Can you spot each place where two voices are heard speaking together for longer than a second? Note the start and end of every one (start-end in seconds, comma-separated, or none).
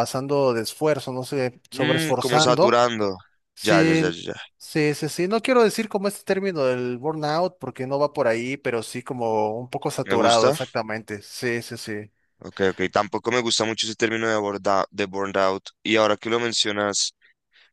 1.7-2.9